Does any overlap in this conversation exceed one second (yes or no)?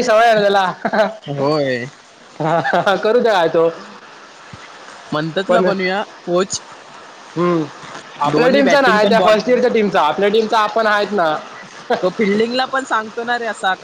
yes